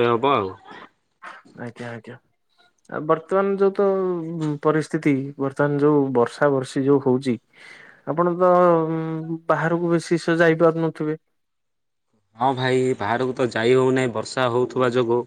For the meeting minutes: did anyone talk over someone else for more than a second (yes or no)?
no